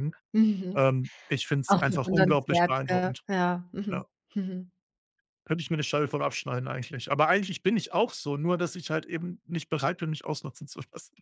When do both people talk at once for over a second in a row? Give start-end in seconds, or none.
1.7-3.2